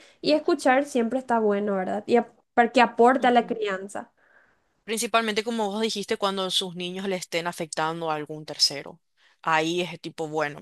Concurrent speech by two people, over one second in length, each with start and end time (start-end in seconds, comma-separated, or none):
none